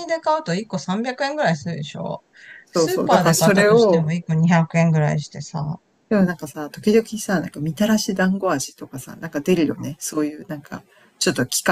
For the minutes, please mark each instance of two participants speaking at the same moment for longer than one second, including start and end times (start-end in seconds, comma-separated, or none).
2.7-4.1